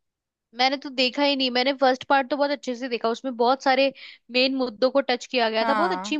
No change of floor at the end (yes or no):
yes